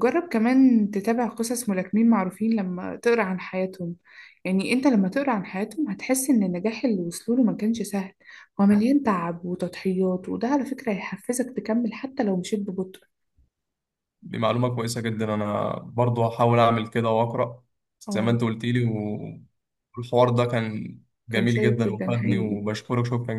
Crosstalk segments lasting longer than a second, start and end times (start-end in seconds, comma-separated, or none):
21.3-22.6